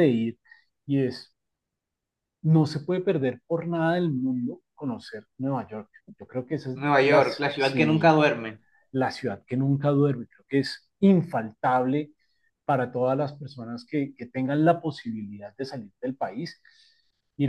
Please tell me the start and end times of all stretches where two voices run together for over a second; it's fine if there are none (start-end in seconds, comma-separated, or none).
6.7-8.2